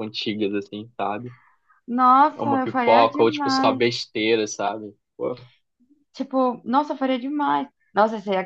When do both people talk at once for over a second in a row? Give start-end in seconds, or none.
2.4-3.8